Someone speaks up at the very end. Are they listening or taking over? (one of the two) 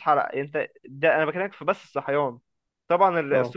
listening